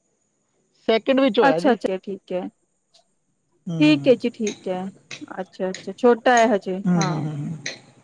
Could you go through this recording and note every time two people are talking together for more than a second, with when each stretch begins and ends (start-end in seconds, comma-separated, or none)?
none